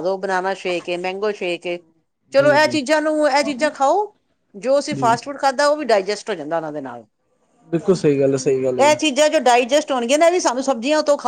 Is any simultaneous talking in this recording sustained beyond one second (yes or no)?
no